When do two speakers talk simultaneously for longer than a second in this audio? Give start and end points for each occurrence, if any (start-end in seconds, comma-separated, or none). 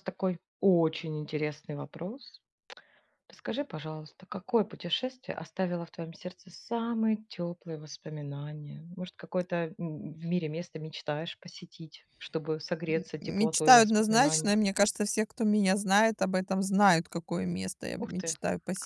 12.9-14.5